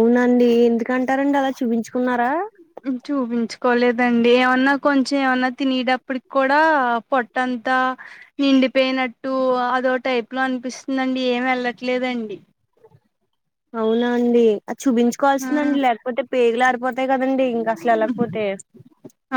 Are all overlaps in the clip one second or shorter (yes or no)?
yes